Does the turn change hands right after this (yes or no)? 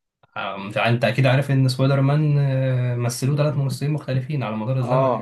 yes